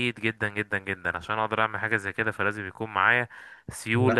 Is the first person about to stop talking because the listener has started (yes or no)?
yes